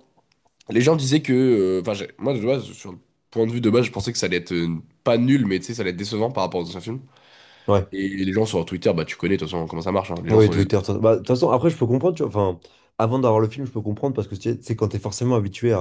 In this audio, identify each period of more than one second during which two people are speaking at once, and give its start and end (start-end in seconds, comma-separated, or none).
none